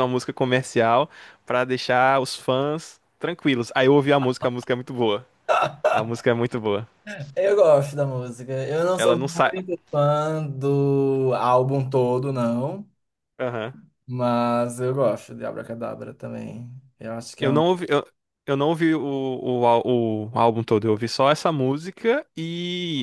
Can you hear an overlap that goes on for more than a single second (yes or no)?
no